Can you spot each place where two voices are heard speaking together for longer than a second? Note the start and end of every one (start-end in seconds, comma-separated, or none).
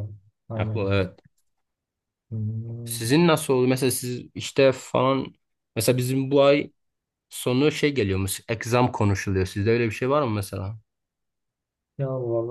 none